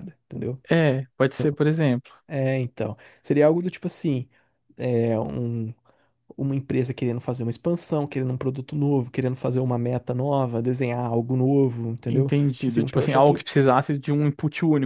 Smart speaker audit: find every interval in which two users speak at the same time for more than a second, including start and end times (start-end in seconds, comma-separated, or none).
12.1-13.4